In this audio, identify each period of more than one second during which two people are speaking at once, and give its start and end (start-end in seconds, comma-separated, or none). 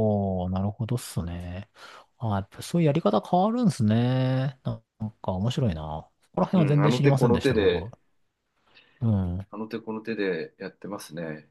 6.5-7.9